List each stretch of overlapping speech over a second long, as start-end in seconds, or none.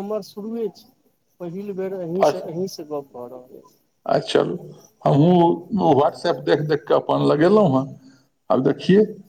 none